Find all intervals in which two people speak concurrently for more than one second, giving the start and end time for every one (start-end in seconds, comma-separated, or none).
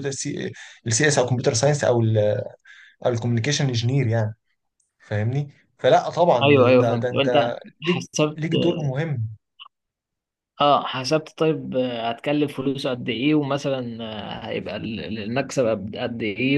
6.4-8.4